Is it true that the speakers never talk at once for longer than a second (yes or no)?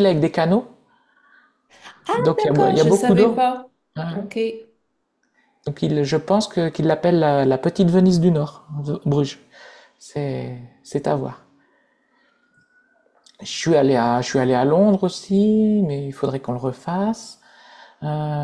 no